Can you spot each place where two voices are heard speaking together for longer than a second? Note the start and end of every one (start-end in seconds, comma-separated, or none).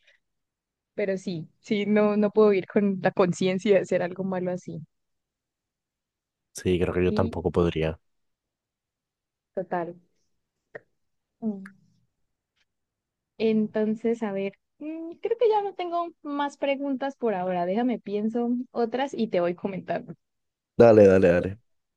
none